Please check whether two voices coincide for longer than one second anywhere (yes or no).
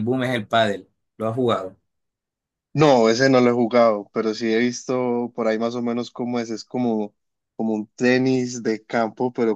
no